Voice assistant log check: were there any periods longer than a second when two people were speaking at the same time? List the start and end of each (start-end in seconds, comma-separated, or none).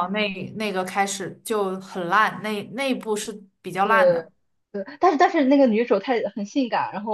none